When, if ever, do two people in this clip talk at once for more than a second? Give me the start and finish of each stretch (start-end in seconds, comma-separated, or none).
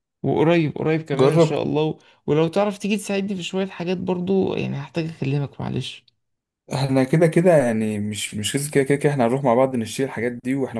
none